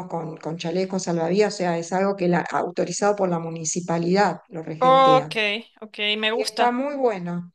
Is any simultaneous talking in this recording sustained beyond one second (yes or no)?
no